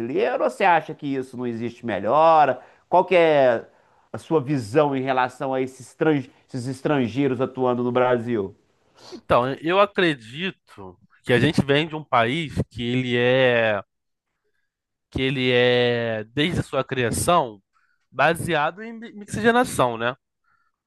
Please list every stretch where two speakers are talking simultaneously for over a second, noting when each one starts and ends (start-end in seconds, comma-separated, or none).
none